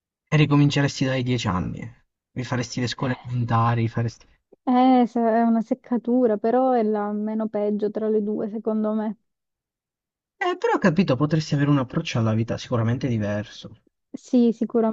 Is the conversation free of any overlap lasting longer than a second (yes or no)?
yes